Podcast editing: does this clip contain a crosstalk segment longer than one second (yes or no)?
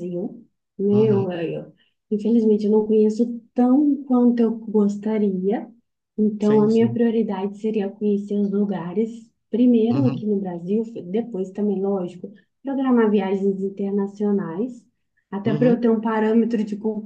no